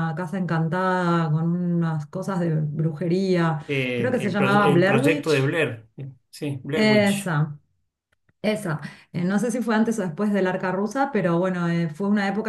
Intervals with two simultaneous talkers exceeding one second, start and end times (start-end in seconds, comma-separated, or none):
3.7-5.5